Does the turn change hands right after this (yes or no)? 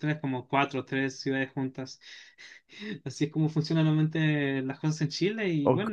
yes